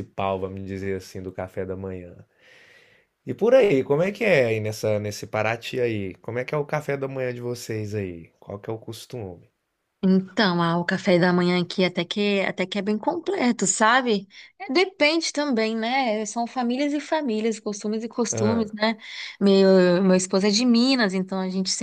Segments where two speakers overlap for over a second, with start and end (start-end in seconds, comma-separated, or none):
none